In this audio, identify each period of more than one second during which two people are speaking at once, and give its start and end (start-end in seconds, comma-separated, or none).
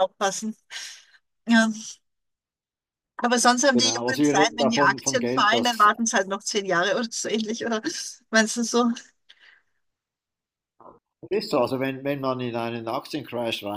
3.7-5.9